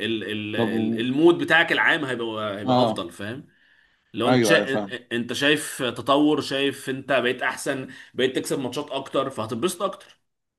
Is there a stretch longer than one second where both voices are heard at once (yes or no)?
no